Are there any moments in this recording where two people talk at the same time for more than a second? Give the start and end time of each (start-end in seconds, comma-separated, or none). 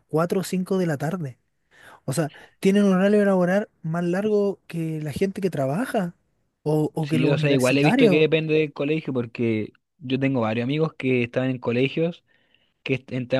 7.0-8.3